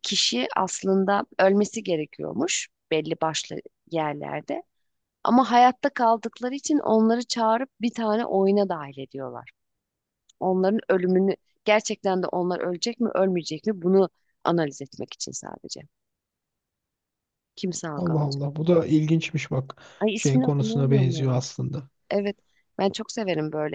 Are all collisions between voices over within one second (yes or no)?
no